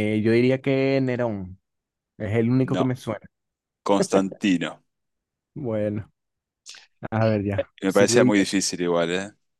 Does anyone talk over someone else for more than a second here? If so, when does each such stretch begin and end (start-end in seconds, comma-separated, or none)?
none